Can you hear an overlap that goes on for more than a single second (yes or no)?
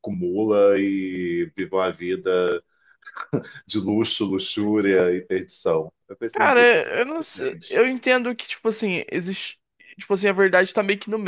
yes